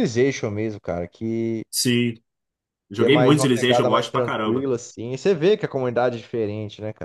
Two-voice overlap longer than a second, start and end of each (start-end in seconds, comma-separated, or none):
2.9-4.7